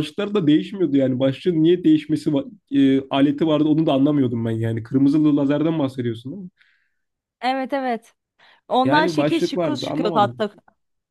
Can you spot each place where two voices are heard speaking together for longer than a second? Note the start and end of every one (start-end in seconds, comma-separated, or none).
8.8-10.4